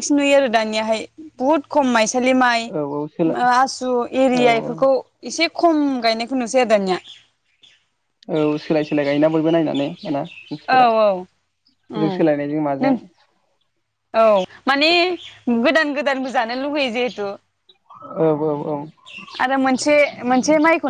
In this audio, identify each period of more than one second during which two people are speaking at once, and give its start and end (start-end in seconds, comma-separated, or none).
none